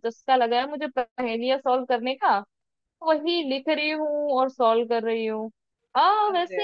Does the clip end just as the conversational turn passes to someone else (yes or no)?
no